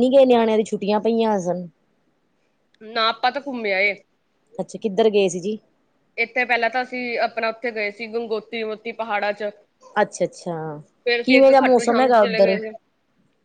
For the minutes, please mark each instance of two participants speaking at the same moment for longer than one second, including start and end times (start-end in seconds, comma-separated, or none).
11.2-12.6